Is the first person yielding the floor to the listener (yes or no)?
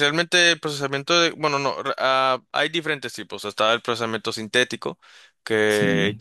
no